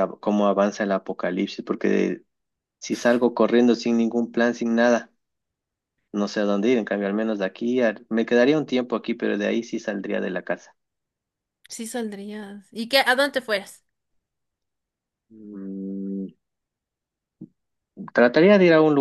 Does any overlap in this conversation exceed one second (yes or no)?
no